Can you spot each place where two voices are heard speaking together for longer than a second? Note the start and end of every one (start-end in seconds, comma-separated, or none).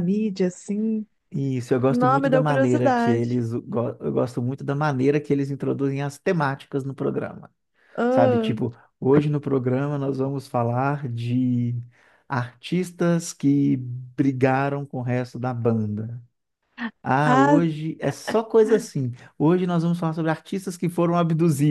1.9-3.4